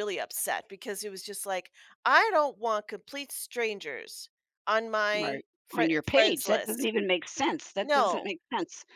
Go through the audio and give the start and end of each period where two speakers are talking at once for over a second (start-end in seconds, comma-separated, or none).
5.2-6.9